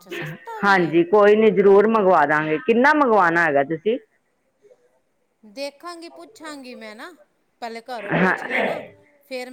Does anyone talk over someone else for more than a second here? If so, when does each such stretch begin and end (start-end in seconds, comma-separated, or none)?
none